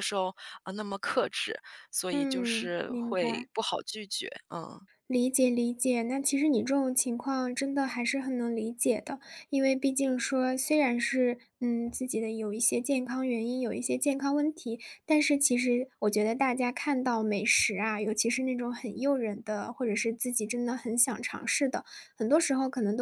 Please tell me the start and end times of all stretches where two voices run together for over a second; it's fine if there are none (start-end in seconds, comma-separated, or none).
2.1-3.5